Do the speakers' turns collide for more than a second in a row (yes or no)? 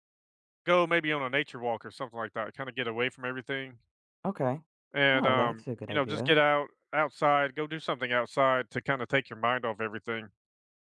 yes